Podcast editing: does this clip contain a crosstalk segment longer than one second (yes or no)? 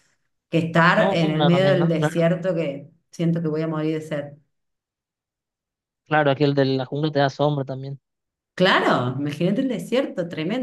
yes